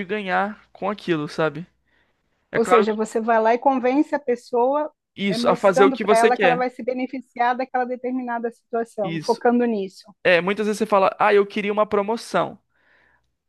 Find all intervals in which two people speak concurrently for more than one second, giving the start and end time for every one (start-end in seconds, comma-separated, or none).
5.3-6.6